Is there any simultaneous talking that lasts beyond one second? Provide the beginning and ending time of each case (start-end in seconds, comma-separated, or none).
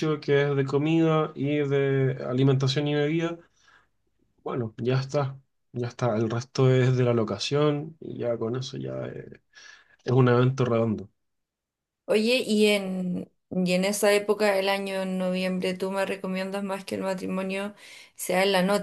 none